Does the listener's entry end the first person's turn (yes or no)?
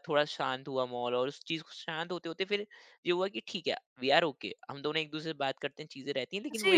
yes